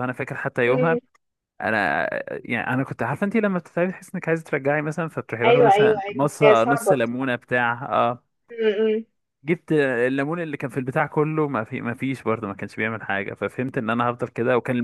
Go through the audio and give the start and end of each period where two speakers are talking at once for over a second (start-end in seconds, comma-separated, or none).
5.5-7.0